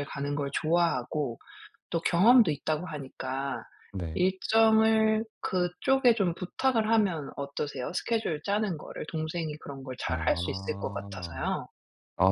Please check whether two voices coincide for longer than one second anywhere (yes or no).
yes